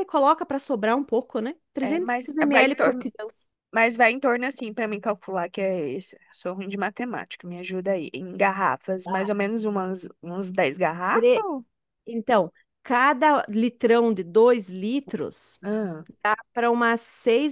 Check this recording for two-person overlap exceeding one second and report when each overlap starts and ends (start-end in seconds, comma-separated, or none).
1.8-3.1